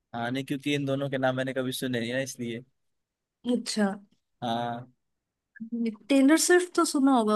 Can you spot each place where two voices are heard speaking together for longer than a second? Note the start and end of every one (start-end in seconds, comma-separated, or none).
none